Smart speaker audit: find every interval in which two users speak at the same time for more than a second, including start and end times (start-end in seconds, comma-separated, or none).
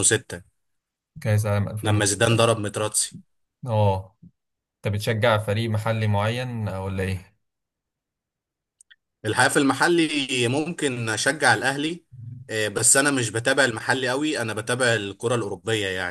none